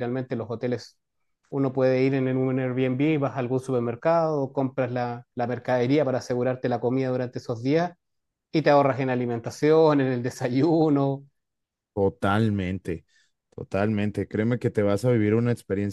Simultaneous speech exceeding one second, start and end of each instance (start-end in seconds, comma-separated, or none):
none